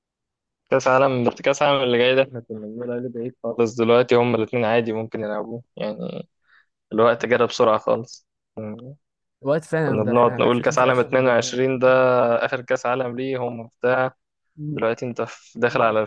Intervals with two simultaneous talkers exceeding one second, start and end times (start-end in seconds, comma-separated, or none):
9.8-11.3